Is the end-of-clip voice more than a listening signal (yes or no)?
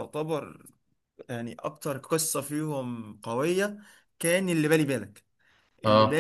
no